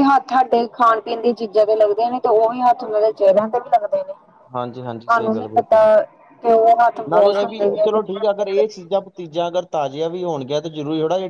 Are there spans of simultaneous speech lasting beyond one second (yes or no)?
yes